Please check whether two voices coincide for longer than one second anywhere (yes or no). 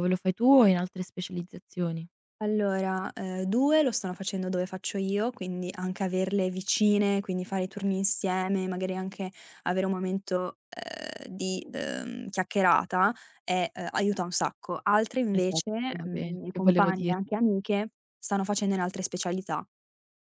yes